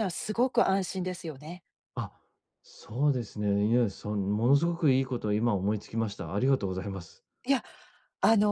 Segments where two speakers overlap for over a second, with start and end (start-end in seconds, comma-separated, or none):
none